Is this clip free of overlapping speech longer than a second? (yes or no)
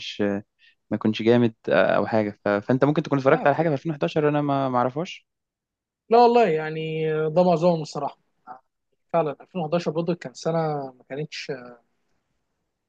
yes